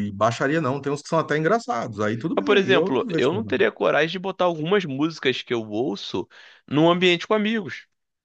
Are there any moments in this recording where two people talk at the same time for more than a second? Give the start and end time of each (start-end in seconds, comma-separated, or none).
2.4-3.6